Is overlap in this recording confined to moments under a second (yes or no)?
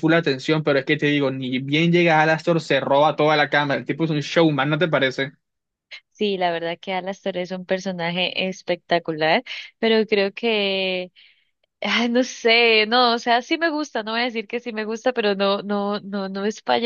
yes